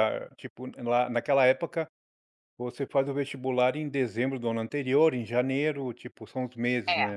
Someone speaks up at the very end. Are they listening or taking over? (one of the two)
taking over